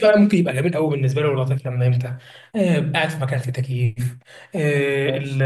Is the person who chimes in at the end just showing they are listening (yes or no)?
yes